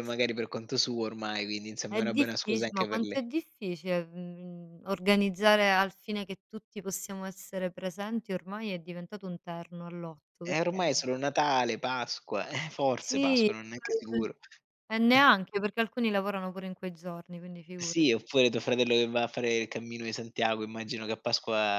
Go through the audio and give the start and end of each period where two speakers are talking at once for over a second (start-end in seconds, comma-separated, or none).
1.9-3.2